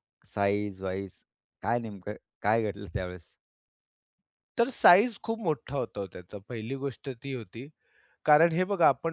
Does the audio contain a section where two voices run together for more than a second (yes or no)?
no